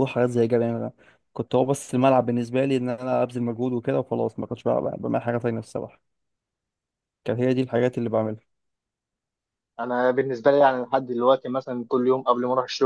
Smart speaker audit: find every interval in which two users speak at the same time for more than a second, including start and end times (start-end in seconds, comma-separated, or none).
none